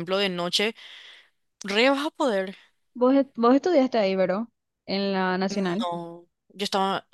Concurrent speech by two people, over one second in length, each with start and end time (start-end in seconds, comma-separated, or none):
none